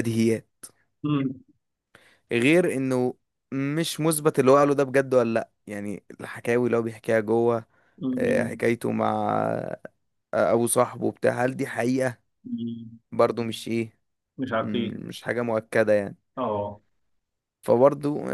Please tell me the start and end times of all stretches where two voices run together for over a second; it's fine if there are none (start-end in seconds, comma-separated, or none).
none